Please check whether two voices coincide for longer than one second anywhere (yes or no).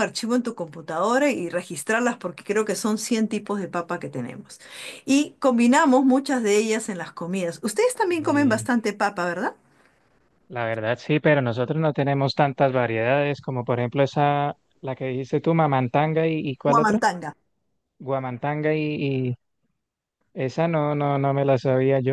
no